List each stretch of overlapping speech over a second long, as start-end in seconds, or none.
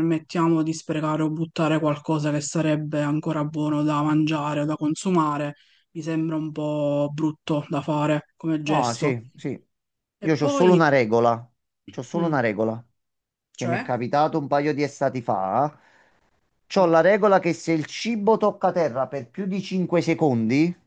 none